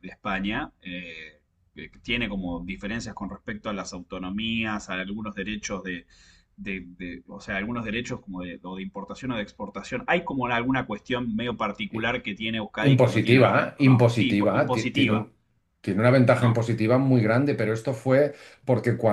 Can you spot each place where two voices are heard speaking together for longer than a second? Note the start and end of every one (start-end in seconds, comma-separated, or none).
12.8-15.3